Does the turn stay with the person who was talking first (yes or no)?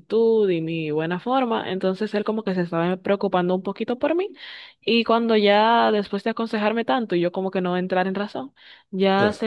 yes